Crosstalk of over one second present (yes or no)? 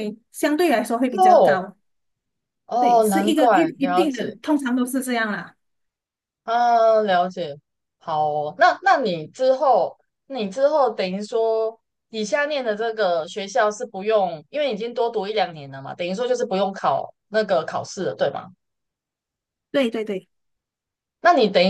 yes